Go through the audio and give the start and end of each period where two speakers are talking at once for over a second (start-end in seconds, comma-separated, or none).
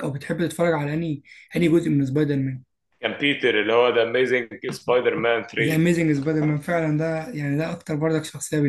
none